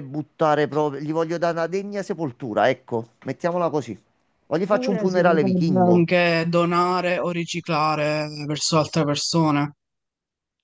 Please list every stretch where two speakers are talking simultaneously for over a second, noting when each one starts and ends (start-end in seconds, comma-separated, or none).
4.7-6.1